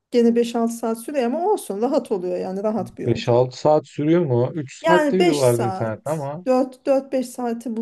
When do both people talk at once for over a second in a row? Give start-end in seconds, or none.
4.8-6.5